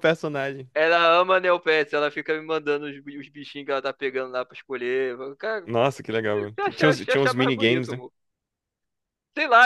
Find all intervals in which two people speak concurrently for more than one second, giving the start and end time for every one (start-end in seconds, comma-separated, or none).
6.3-8.0